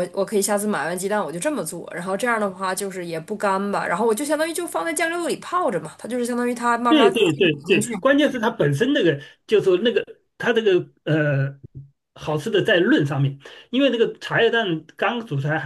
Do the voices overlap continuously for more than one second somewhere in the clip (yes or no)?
no